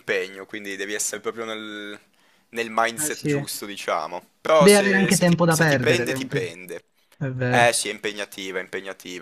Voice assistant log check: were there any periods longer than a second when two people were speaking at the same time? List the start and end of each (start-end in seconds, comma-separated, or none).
4.6-6.5